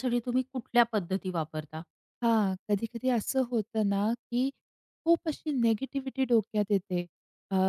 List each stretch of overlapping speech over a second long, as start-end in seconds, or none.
none